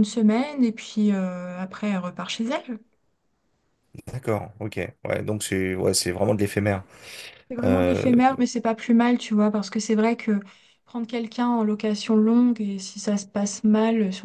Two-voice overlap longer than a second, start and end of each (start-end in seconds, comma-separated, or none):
none